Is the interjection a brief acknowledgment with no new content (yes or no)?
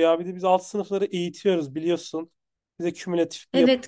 no